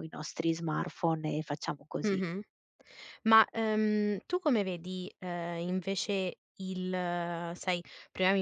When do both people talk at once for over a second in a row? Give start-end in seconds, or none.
none